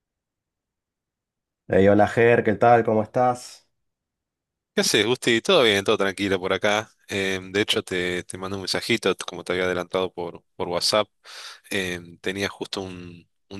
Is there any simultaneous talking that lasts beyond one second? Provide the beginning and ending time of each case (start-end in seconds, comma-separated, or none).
none